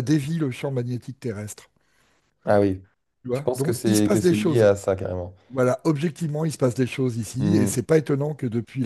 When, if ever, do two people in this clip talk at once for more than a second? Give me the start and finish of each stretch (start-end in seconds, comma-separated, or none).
3.3-4.7